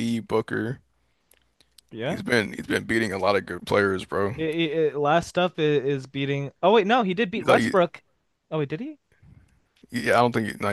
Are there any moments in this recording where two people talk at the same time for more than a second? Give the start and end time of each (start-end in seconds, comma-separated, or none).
none